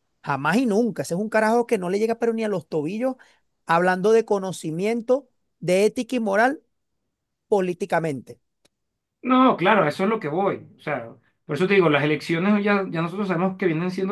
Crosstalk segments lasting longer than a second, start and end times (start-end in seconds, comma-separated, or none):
none